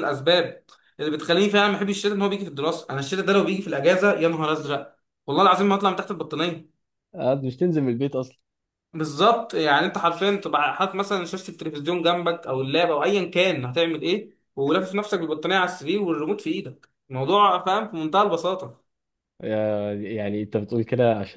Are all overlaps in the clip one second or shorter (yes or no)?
yes